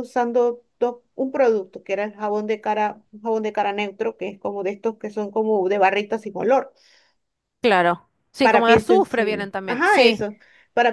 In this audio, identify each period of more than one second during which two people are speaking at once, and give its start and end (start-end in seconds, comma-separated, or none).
8.4-10.2